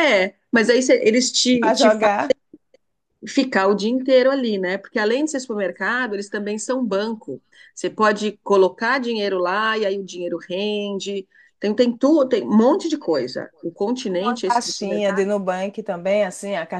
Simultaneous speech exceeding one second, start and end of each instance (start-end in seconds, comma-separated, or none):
14.1-15.3